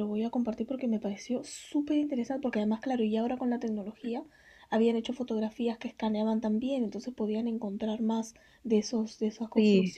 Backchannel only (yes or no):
yes